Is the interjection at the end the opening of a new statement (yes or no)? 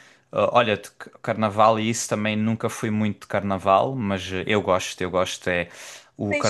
yes